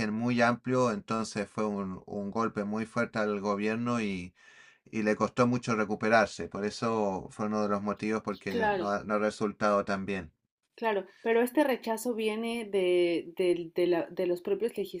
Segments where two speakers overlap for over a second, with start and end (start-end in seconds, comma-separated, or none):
none